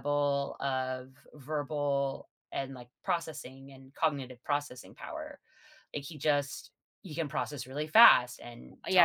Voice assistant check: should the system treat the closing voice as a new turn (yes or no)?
yes